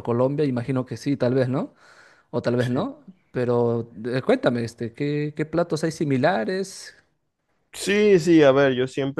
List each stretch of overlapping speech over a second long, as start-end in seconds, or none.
none